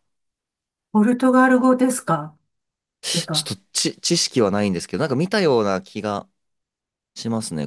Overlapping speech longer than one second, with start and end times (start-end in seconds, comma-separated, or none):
none